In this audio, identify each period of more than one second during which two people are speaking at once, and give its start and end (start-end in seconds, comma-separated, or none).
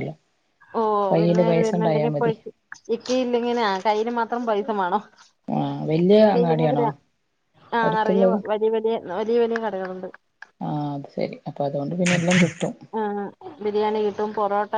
none